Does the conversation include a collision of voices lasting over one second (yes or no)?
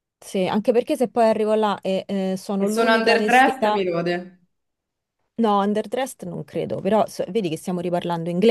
yes